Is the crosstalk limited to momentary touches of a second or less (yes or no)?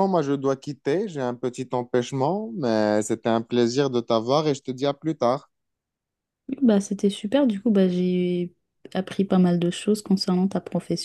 yes